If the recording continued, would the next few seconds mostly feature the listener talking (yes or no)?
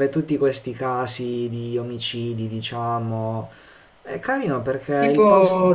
yes